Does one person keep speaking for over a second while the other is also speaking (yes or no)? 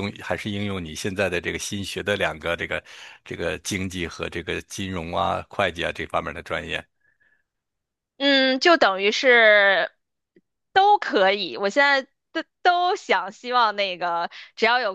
no